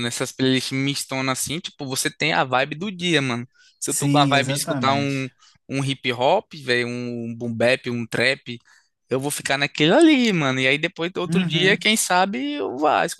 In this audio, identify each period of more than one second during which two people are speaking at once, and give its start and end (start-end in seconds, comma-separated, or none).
3.9-5.3